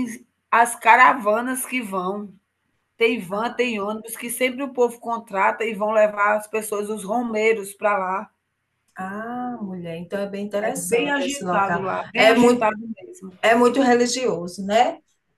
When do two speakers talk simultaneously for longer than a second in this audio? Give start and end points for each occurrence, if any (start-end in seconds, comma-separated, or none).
10.6-12.7